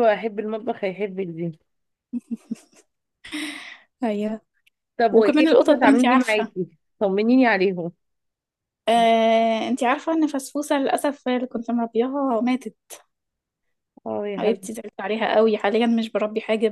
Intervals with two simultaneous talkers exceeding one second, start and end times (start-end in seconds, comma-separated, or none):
5.1-6.5